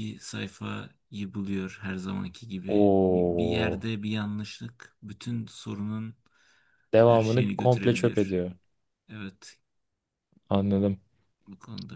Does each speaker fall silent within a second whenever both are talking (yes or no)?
no